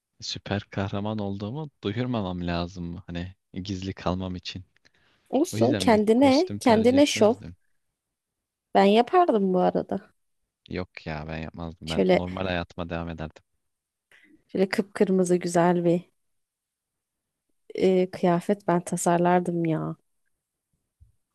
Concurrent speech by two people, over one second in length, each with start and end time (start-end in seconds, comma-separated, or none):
5.5-7.3